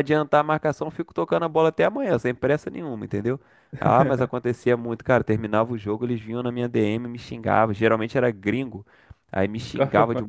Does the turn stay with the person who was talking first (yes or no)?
yes